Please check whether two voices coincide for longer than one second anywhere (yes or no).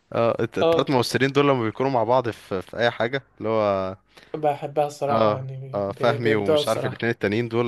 yes